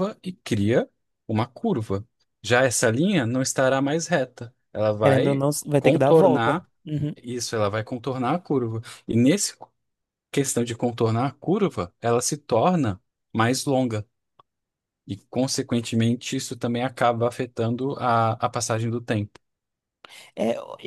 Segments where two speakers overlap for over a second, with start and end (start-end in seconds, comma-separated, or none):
5.0-6.7